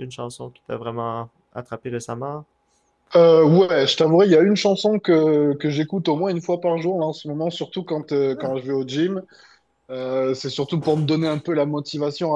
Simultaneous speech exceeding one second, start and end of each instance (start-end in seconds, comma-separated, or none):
none